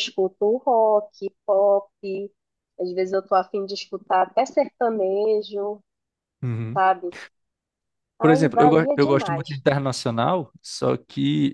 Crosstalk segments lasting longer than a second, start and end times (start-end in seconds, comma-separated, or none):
8.2-9.6